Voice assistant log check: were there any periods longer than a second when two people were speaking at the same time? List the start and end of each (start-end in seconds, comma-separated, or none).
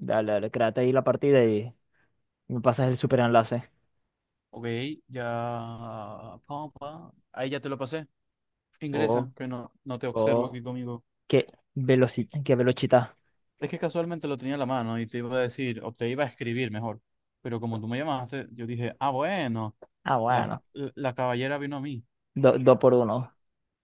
none